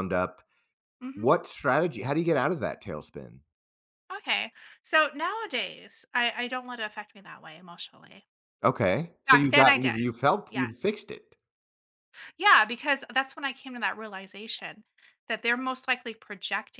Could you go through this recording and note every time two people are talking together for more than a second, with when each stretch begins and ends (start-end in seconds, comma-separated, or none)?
9.3-10.9